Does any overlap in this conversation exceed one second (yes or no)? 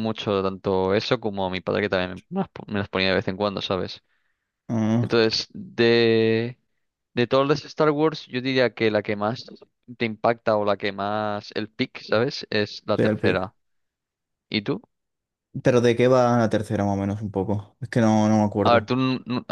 no